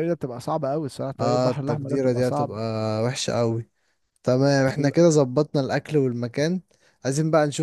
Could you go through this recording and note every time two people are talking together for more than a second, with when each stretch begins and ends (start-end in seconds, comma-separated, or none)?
1.2-2.6